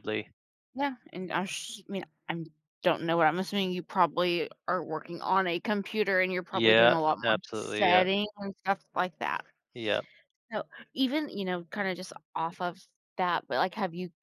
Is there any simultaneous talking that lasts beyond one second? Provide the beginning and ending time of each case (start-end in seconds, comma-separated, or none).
6.5-8.0